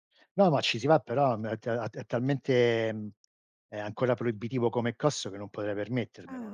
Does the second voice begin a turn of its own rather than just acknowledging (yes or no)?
yes